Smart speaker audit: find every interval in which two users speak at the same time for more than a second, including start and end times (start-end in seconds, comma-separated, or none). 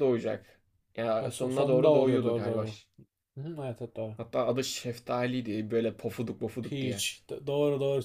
1.2-2.6